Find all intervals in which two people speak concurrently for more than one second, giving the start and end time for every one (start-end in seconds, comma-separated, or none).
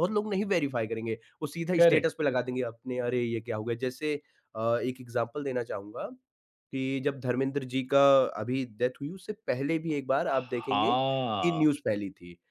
10.3-11.6